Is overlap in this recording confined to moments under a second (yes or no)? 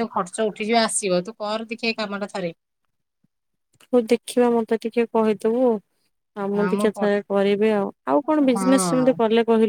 yes